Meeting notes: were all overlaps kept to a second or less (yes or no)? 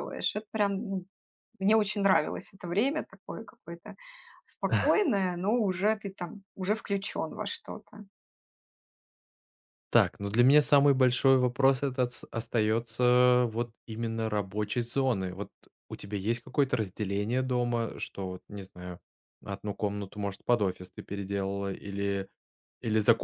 yes